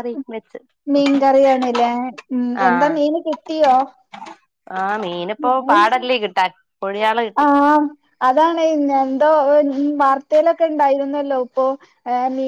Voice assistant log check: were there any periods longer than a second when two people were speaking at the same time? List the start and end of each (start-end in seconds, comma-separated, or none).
none